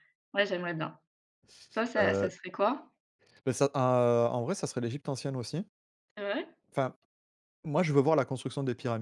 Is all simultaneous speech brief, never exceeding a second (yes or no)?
yes